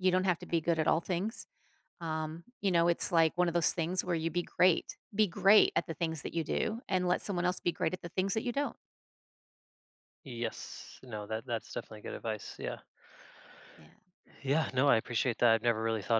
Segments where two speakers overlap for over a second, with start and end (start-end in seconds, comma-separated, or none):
none